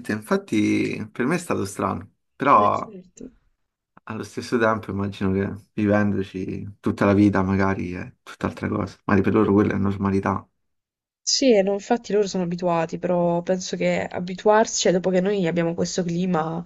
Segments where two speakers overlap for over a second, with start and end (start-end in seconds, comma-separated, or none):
none